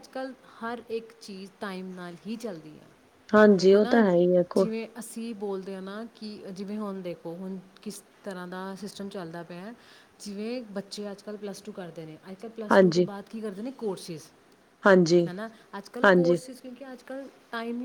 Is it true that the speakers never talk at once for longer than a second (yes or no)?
yes